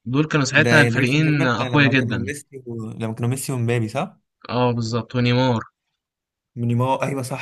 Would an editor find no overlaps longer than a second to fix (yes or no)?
no